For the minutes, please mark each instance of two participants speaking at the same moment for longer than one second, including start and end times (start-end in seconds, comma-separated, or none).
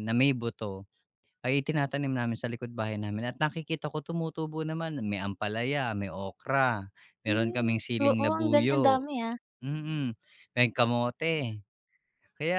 7.3-9.1